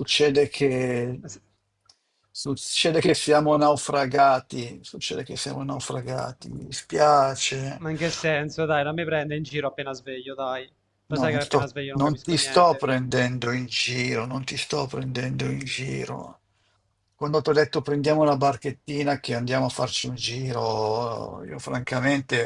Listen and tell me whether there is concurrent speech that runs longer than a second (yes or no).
yes